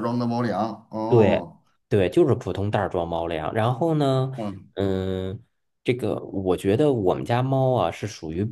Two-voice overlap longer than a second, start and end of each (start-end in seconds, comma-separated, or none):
none